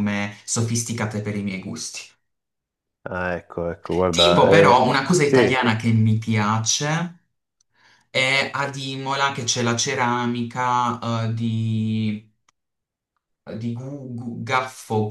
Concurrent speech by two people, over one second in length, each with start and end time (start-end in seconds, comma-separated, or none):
4.1-5.7